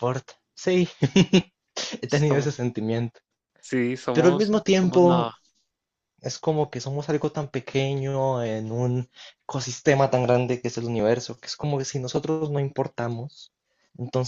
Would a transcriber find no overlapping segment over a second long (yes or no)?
no